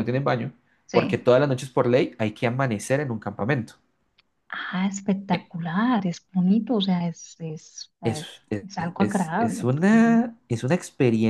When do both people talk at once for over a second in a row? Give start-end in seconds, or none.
8.0-10.2